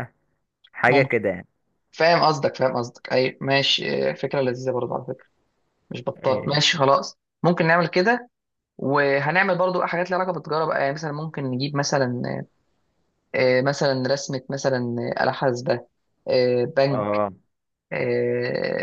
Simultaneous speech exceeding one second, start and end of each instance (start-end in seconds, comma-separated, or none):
none